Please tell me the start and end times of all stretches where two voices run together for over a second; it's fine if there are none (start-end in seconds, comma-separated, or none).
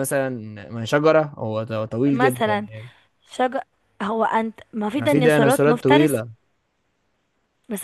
5.0-6.2